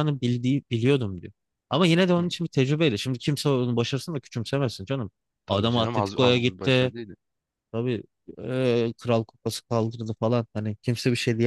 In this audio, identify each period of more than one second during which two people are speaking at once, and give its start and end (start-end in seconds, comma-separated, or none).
5.5-6.9